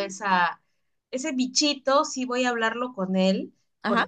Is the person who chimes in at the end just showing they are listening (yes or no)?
yes